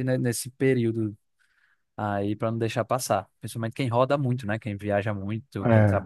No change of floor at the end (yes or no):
yes